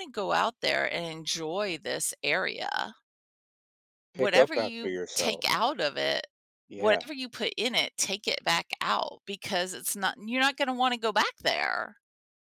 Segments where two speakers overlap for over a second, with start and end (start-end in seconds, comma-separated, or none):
4.1-5.5